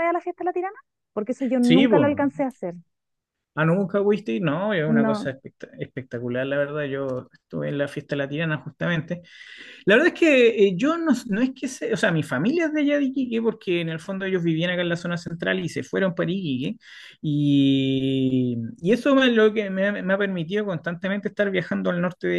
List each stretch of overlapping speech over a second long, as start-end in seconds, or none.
none